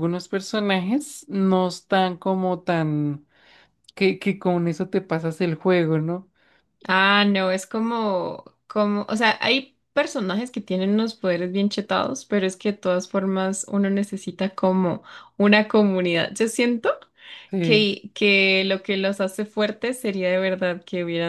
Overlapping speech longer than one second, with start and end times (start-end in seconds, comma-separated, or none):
none